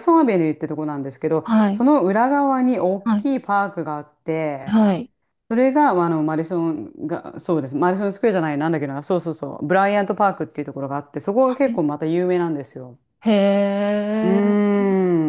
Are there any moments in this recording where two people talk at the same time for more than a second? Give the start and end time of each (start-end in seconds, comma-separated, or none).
none